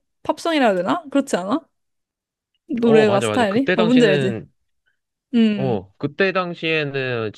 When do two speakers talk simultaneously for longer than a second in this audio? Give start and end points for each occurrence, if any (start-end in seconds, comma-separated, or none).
2.8-4.3